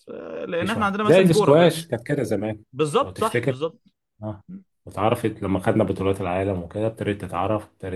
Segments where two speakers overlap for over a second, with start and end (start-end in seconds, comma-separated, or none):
0.6-1.8